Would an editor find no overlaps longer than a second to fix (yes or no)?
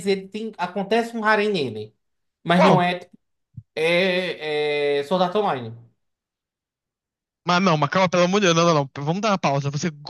yes